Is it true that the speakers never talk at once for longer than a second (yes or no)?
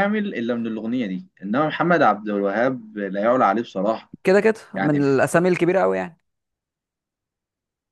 yes